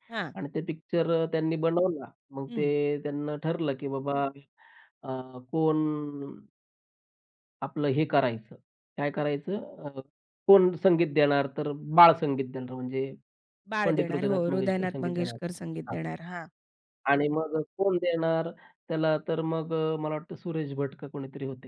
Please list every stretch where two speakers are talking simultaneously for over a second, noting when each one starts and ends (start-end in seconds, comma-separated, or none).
13.8-15.4